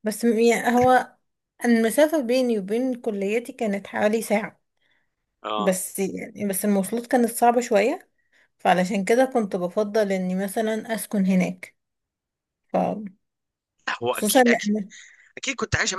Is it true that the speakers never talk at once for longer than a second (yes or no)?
yes